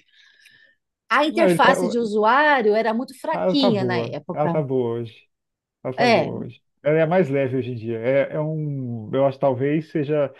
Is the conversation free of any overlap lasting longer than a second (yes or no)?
no